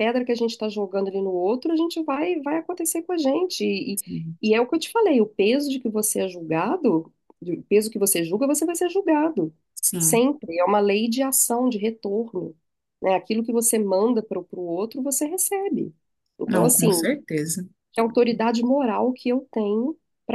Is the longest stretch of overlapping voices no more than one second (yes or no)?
yes